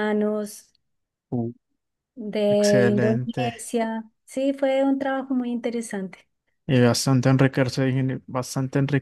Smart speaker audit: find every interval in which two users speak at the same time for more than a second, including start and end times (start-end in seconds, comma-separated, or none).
2.5-3.7